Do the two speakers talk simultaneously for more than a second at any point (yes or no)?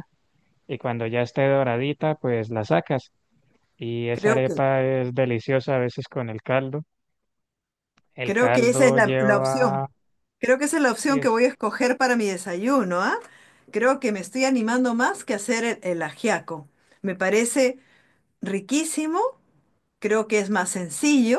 yes